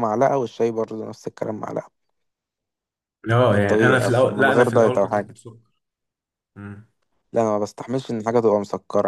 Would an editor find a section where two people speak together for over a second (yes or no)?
yes